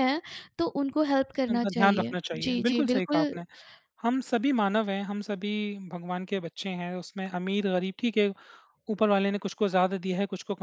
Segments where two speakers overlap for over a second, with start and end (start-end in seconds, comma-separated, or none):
1.5-3.3